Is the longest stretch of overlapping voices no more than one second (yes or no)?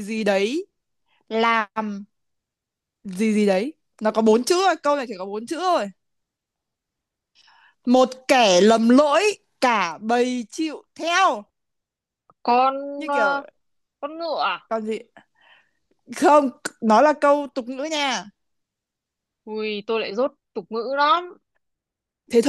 yes